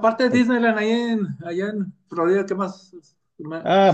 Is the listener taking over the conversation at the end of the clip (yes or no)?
yes